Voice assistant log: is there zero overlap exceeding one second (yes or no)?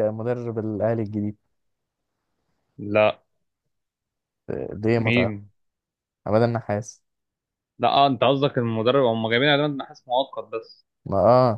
yes